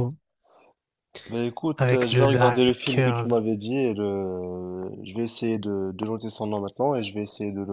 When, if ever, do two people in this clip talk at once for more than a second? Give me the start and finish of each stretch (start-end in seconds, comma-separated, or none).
1.8-3.4